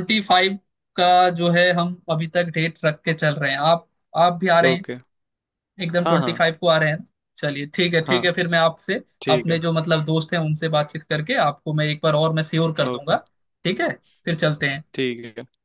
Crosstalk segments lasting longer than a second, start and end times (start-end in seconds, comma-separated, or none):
none